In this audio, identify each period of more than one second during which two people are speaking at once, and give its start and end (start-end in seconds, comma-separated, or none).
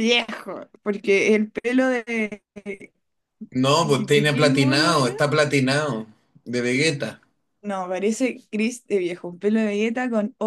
3.8-5.1